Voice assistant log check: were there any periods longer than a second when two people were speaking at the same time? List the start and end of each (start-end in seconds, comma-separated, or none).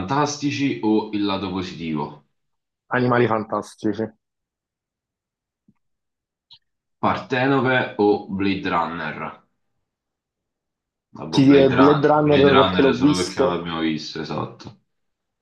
11.3-13.6